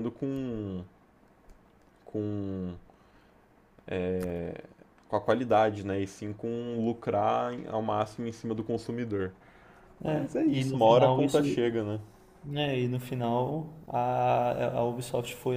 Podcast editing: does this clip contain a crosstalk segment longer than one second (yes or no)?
yes